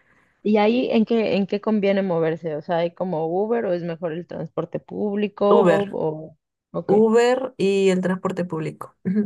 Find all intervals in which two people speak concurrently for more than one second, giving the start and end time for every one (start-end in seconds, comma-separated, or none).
none